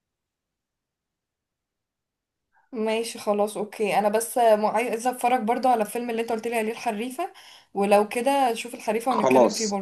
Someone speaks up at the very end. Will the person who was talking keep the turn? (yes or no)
no